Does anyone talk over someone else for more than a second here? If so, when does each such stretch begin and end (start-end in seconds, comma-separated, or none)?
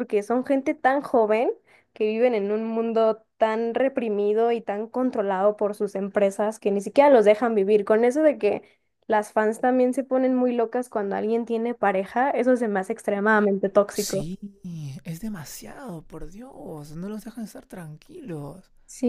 none